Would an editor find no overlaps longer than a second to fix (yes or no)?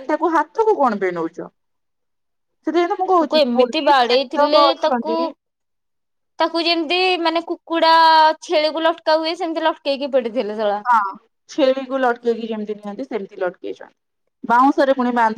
no